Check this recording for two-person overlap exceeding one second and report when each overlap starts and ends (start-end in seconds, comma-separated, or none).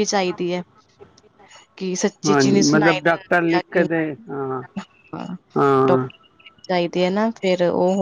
2.2-3.9